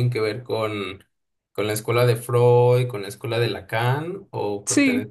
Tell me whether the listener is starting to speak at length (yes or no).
yes